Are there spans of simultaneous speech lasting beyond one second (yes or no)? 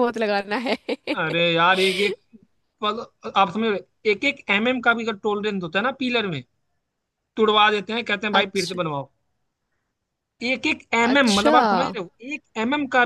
no